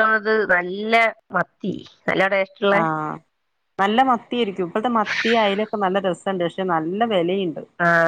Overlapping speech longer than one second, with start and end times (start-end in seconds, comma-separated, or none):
none